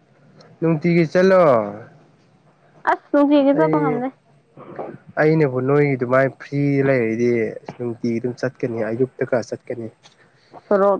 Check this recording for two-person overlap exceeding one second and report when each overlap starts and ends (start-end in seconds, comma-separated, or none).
none